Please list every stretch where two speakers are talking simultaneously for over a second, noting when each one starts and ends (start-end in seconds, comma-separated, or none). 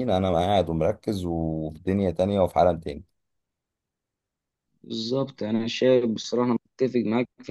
none